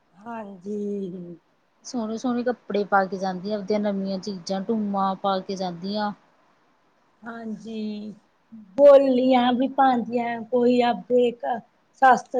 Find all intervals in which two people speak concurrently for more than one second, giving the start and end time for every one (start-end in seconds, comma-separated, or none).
none